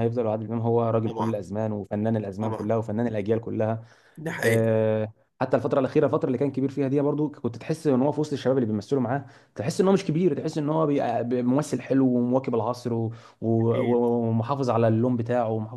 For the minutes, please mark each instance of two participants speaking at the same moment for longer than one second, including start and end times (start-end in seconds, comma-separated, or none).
none